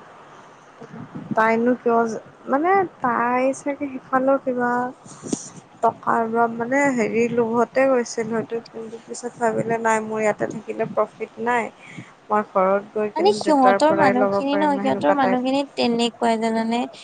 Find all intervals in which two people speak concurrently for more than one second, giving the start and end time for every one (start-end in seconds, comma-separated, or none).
13.2-15.4